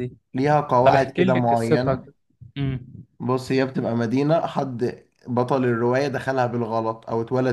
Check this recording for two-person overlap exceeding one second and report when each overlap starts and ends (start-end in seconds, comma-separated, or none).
0.8-2.1